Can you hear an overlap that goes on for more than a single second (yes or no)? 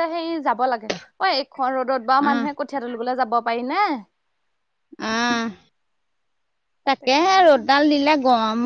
no